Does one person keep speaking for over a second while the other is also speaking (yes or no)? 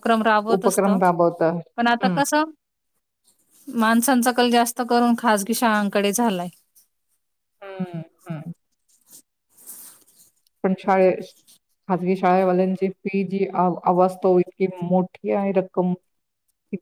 no